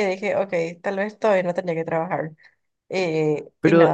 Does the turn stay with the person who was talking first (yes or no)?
no